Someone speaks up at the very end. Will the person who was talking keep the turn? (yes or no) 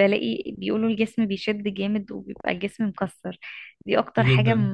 yes